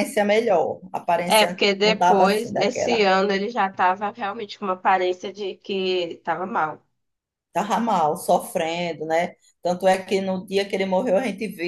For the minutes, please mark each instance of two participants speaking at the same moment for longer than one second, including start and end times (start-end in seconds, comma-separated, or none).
1.2-3.1